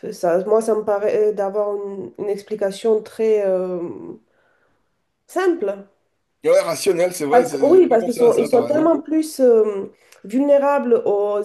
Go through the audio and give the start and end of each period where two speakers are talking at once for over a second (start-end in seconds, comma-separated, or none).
7.3-9.0